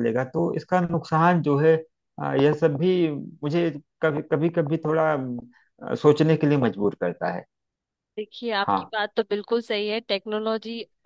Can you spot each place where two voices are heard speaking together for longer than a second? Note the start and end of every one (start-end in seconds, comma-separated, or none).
none